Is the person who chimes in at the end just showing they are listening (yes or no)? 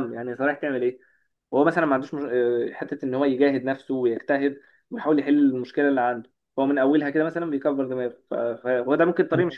yes